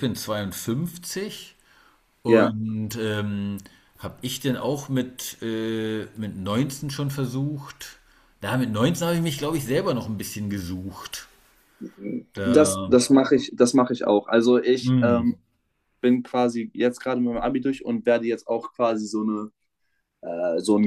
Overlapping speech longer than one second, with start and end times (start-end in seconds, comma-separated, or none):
none